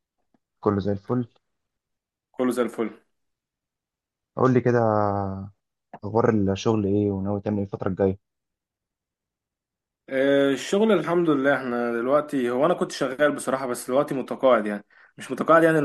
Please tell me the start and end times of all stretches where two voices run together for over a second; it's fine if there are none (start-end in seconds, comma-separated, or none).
none